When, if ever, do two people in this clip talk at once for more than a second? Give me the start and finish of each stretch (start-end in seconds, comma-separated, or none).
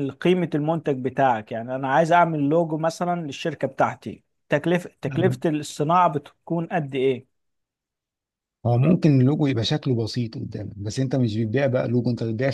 none